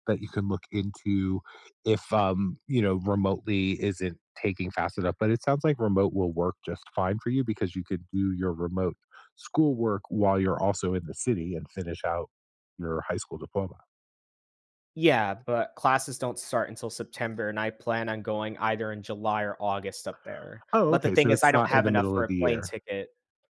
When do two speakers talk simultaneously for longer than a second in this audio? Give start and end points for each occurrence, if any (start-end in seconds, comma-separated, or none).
20.7-22.8